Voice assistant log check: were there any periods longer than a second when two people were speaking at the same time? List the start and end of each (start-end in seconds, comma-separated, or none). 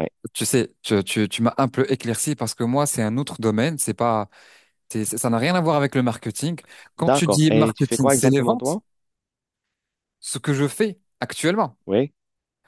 7.0-8.8